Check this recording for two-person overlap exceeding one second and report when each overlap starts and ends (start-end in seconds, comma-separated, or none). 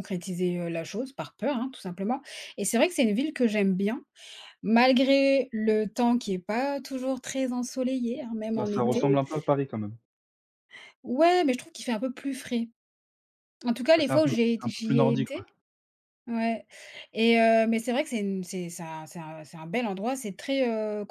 13.9-15.4